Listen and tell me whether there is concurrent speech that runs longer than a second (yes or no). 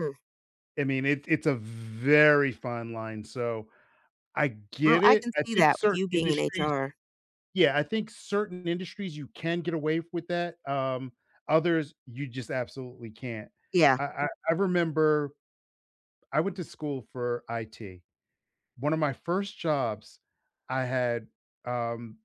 yes